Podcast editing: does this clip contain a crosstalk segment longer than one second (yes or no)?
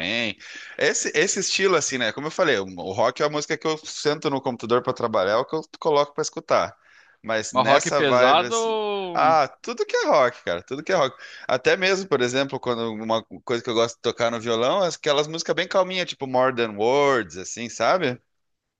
yes